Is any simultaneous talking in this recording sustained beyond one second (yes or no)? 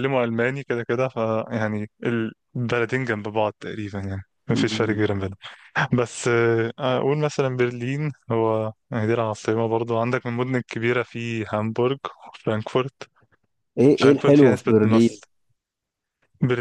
yes